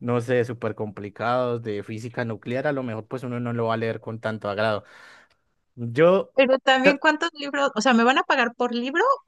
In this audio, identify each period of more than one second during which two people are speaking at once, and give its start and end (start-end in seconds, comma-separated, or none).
none